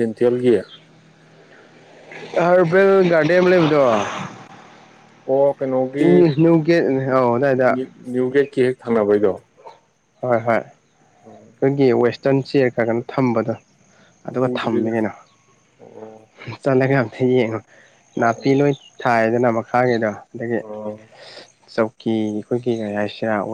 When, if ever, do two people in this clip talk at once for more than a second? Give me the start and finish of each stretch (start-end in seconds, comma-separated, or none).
none